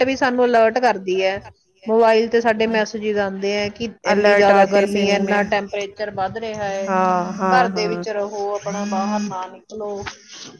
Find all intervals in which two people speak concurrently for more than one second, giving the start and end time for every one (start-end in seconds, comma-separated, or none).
4.1-5.4